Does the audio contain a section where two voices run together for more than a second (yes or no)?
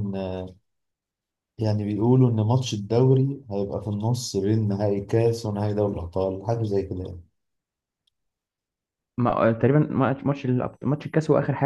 no